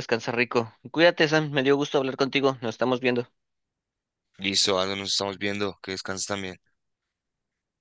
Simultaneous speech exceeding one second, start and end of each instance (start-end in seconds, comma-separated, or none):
none